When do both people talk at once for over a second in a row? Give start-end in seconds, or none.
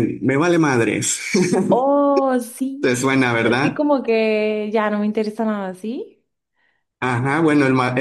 none